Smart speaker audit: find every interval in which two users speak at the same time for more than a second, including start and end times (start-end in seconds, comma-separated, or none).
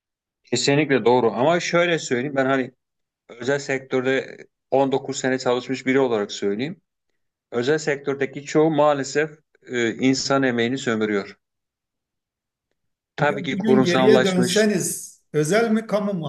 13.2-14.7